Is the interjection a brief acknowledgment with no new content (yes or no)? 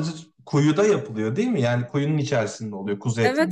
no